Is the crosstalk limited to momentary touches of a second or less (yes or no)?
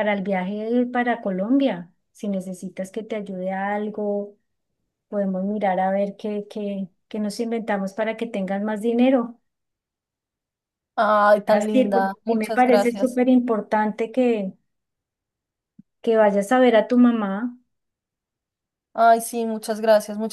no